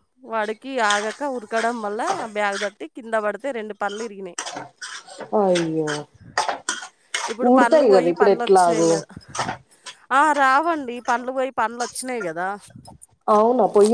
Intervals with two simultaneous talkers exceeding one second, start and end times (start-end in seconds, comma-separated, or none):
7.5-8.9